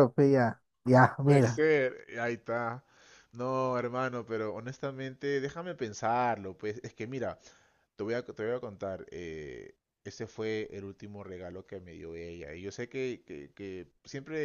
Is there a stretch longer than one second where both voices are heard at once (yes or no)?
no